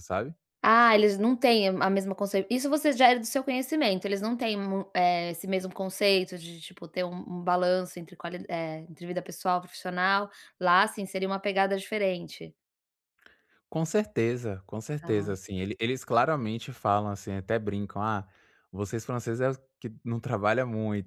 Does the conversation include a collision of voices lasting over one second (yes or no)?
no